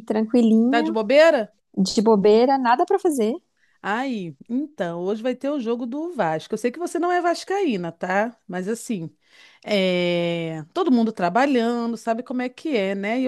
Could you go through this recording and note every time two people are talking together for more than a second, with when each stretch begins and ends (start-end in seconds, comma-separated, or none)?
none